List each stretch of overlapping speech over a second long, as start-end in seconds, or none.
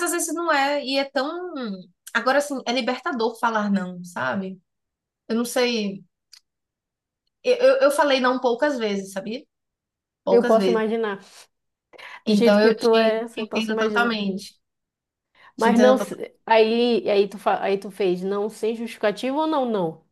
12.3-14.3